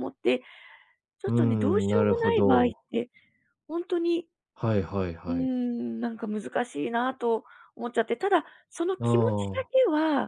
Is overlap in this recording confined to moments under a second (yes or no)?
no